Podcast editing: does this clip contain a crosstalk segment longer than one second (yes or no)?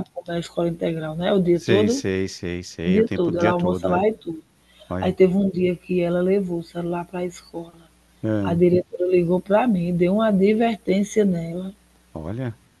yes